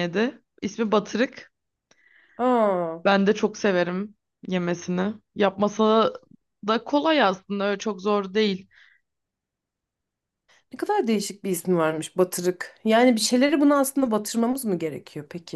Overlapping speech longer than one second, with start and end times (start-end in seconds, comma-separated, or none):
none